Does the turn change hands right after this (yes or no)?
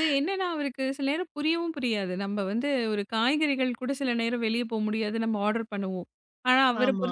no